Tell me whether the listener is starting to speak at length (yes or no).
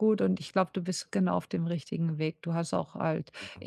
no